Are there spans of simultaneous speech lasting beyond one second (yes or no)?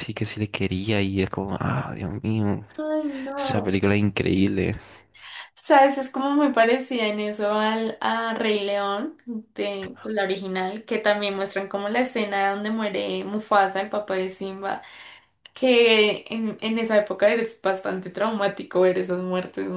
no